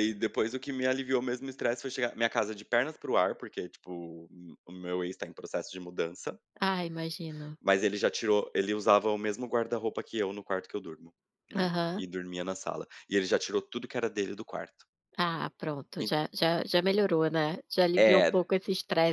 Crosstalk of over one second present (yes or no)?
no